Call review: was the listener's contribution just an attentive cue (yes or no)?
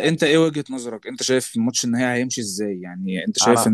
yes